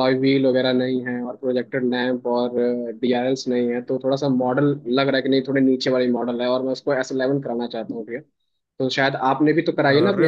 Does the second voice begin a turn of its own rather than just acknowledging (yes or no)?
no